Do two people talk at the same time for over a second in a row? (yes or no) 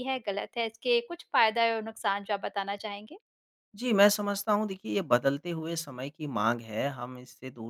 no